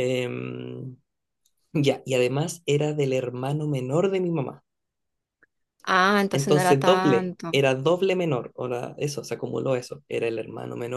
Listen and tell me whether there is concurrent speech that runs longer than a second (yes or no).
yes